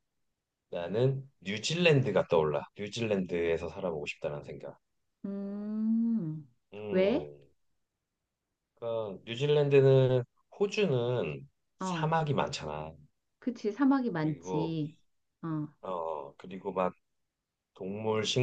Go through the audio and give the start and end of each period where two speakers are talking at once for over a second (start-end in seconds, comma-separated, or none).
none